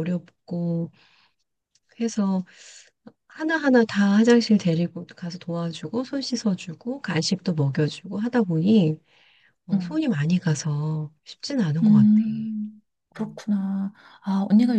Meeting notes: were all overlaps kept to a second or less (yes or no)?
yes